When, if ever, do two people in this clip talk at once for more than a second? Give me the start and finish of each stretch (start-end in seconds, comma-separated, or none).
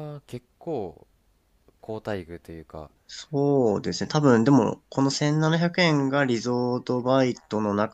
none